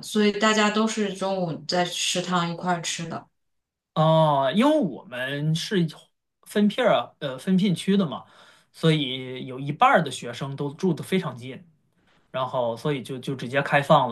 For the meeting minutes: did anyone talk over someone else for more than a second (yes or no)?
no